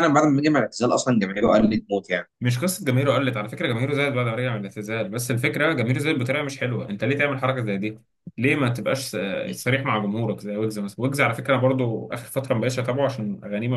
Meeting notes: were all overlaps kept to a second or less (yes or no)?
yes